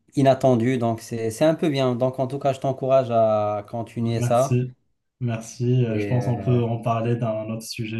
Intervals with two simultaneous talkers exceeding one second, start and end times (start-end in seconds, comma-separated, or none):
none